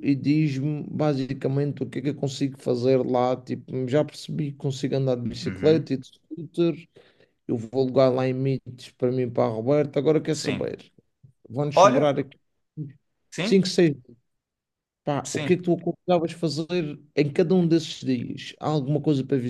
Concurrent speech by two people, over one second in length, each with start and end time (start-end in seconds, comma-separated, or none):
none